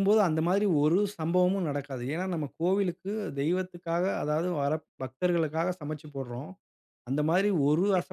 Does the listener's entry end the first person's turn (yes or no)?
no